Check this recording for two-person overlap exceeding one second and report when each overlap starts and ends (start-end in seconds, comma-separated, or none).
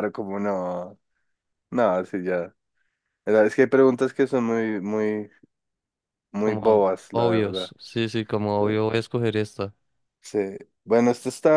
6.4-7.7